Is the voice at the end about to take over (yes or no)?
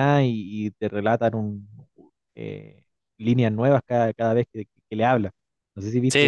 yes